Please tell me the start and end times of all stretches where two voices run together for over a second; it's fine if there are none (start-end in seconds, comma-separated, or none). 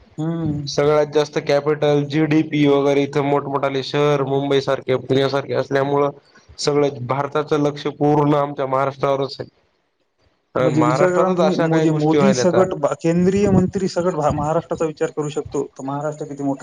10.8-12.8